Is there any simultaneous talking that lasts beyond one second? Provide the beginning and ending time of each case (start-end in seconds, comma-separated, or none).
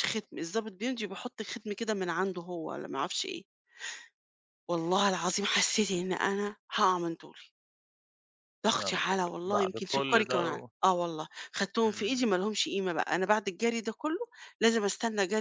8.8-10.7